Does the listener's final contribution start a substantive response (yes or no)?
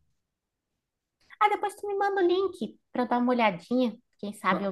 no